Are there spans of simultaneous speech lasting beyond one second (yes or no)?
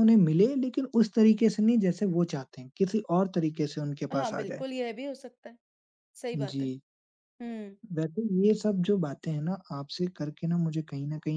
no